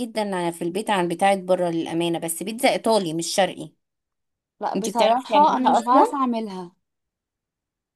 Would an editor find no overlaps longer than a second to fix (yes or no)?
no